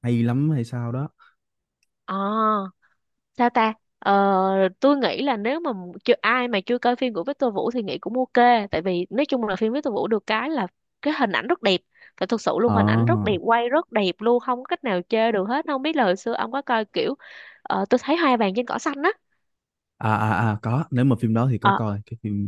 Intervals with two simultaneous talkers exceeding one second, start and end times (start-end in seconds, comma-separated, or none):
none